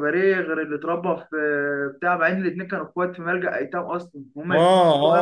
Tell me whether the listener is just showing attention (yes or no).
no